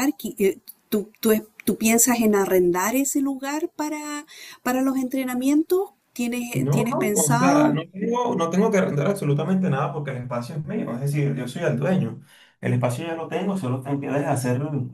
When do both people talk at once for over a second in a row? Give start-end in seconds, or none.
6.5-7.8